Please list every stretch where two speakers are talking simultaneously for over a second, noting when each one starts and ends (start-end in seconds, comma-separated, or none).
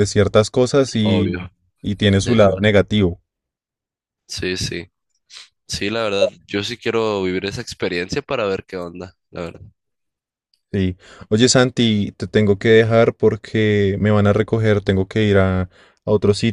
none